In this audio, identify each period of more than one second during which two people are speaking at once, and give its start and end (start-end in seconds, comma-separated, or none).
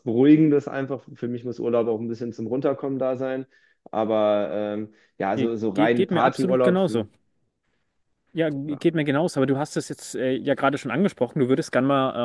5.4-7.1